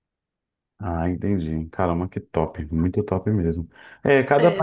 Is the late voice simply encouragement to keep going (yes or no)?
yes